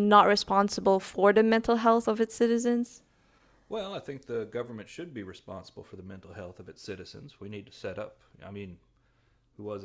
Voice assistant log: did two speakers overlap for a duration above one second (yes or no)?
no